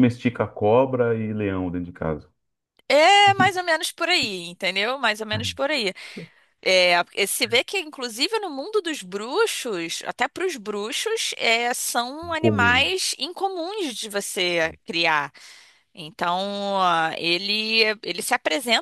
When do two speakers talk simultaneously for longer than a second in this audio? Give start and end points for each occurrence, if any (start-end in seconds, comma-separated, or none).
none